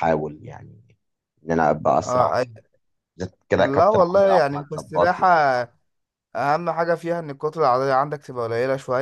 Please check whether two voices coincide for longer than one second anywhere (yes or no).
yes